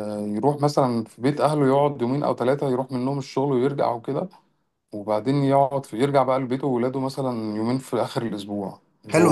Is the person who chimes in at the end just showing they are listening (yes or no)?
no